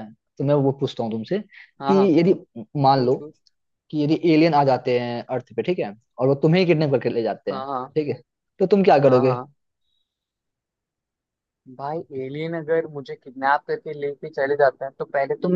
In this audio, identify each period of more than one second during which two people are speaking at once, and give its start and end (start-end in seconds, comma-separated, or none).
none